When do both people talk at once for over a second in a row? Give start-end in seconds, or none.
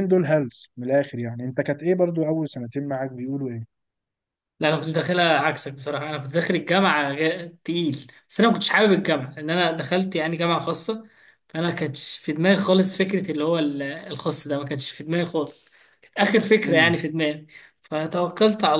none